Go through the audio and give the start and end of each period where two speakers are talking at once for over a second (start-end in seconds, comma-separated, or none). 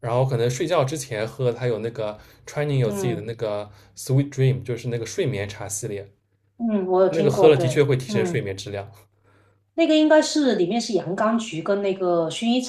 7.1-8.5